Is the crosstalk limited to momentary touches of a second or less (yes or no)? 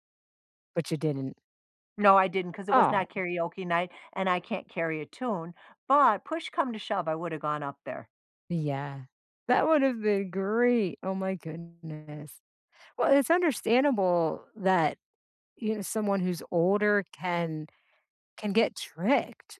yes